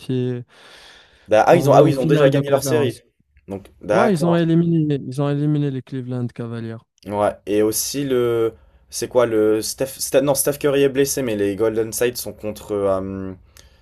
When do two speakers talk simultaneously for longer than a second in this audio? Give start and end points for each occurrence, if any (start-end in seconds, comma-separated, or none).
1.5-3.0